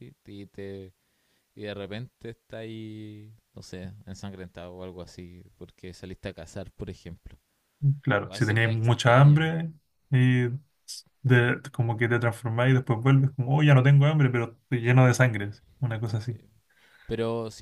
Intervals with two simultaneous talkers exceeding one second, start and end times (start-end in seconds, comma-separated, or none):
8.2-9.4